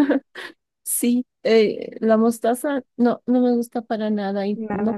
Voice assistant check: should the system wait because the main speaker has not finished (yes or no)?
yes